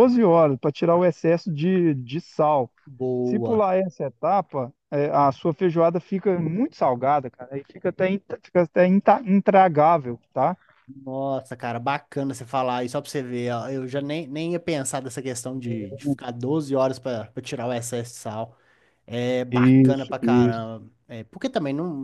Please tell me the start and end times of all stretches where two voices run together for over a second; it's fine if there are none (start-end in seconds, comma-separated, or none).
19.5-20.7